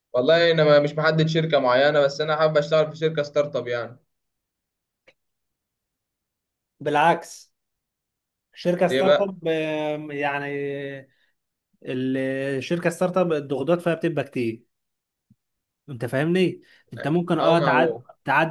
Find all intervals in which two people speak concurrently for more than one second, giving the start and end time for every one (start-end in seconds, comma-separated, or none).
none